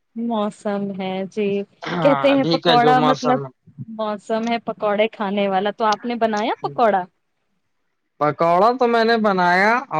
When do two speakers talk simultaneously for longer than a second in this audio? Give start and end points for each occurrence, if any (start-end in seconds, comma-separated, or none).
2.0-3.4